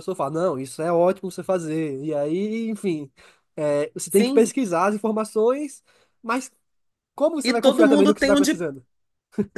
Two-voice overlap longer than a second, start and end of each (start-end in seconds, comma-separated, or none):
7.4-8.7